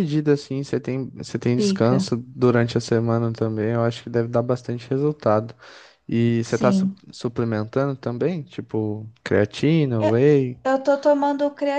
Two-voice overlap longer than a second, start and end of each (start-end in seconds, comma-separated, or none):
none